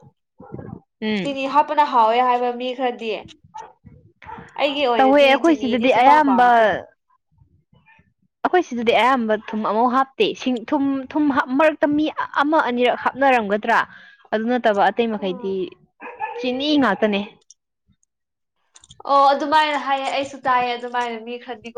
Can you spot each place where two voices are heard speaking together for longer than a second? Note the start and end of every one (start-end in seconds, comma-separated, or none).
5.0-6.5